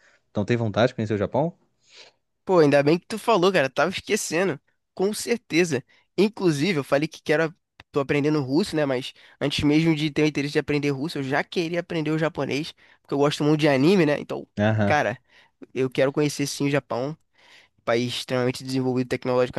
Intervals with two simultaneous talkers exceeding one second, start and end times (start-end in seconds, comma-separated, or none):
none